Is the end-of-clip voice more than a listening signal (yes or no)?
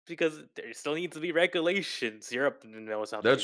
yes